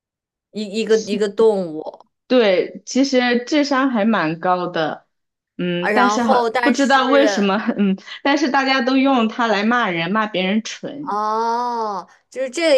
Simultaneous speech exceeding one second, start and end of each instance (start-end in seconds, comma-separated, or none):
5.8-7.5